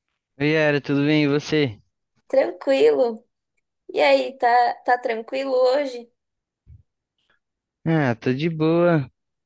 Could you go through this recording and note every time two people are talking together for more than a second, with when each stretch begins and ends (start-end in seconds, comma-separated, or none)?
none